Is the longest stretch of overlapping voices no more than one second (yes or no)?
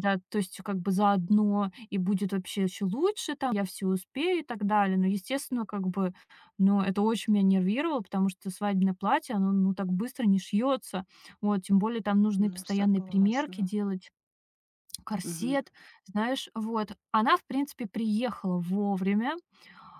no